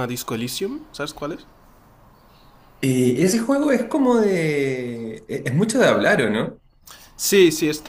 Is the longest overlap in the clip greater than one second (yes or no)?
no